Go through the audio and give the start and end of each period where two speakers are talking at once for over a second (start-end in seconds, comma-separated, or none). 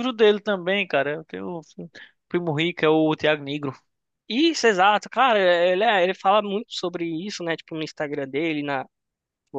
none